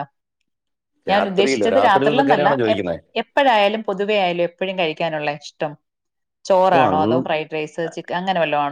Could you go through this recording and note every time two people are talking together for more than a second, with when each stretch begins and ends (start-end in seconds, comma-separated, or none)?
1.1-2.9